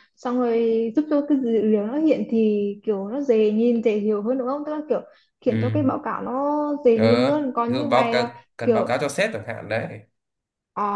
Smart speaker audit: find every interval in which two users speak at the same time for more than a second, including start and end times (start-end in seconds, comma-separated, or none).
7.0-8.9